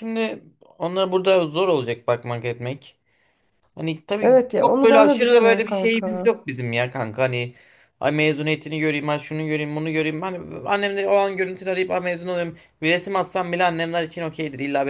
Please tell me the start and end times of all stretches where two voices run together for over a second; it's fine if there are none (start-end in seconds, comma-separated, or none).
4.2-6.3